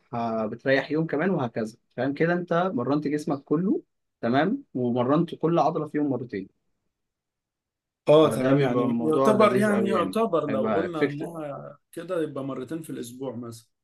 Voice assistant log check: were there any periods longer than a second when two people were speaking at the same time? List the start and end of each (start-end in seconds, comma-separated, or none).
8.2-11.3